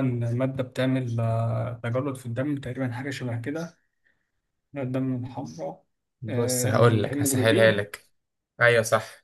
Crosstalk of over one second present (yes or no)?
yes